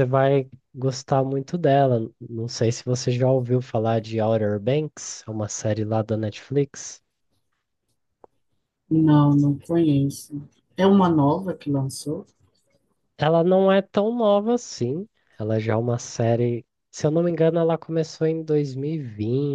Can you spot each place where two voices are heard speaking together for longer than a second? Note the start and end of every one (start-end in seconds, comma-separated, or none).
none